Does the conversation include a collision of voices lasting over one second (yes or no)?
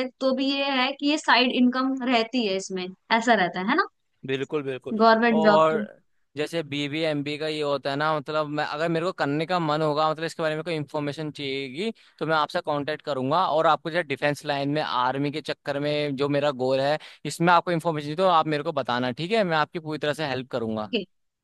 no